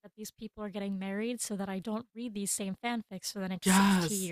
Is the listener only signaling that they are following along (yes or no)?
no